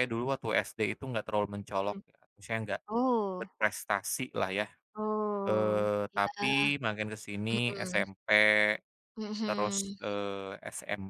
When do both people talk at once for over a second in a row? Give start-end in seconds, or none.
5.4-6.7